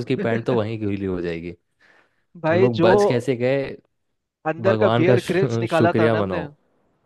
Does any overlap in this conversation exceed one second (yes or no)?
yes